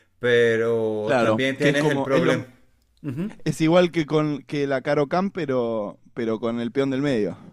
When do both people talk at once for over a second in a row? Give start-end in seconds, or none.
1.0-2.5